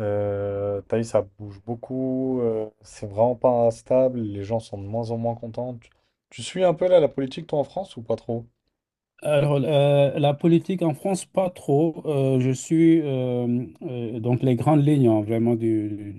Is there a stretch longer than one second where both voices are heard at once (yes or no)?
no